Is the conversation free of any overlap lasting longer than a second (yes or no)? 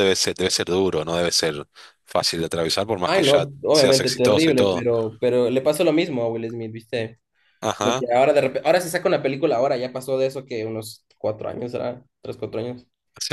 no